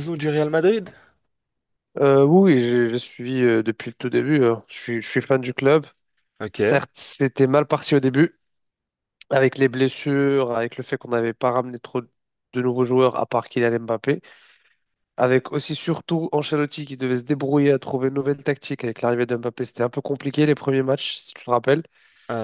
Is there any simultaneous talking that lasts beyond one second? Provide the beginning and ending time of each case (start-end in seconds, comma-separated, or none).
none